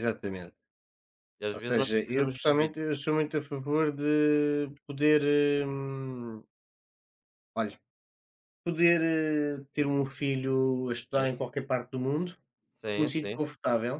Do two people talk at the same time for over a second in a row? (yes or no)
yes